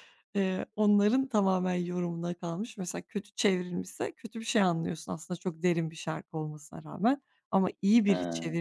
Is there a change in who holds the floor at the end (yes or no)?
no